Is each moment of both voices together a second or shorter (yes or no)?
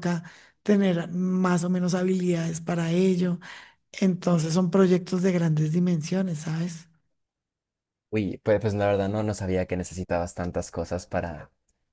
yes